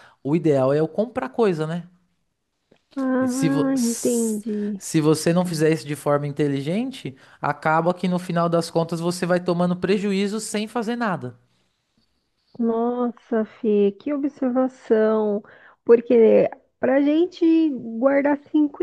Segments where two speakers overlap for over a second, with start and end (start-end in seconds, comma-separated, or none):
3.2-4.8